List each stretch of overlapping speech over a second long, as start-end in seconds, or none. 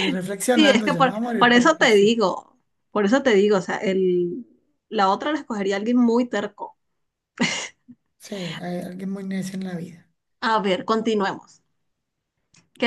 0.6-2.2